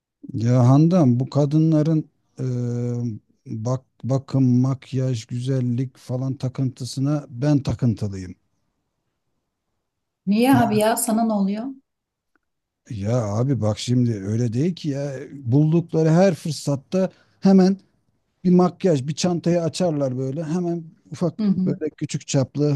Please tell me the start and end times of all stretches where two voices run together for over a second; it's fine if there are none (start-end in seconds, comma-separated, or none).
none